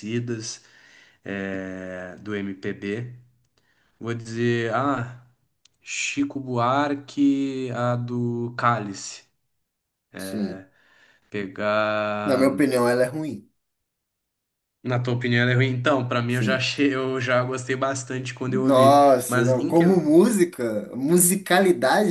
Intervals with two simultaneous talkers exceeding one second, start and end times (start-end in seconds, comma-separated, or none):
18.5-19.9